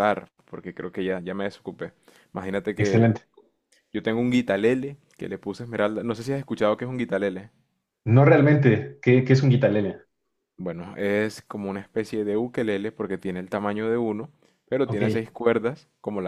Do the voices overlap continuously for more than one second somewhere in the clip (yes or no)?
no